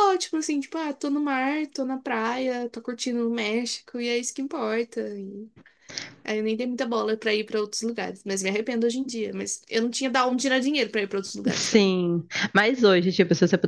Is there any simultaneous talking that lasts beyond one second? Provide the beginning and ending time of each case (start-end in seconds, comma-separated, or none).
none